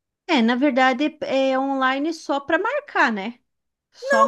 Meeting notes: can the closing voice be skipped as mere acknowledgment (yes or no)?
no